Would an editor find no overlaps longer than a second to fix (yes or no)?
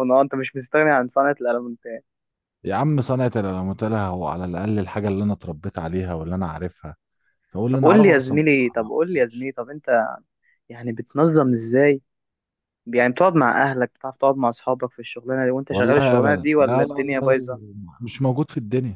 no